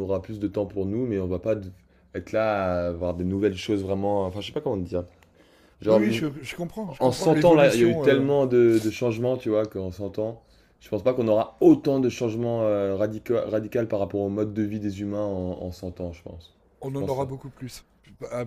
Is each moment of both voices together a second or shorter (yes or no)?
no